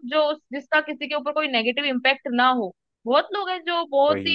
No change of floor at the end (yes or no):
yes